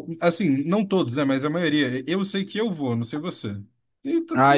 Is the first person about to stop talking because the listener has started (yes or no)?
yes